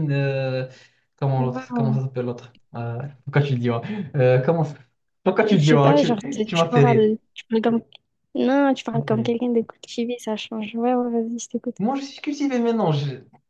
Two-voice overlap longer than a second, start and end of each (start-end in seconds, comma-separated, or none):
5.5-7.1